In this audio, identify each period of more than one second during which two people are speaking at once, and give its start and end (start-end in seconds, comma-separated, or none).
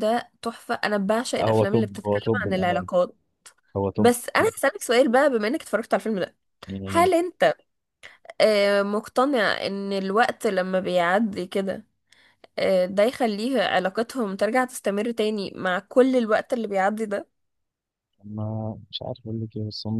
1.4-2.9